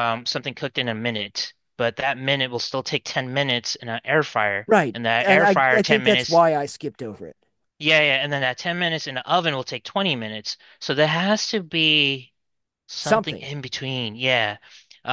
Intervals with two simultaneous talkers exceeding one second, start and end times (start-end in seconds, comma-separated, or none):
4.7-6.4